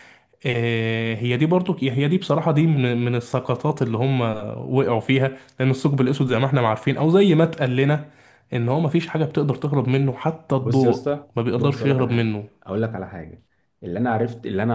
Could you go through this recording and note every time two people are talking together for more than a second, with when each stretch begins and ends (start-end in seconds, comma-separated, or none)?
10.6-12.4